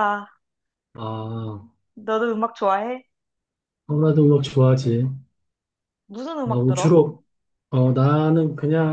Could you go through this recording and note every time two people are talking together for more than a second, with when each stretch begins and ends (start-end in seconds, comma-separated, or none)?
none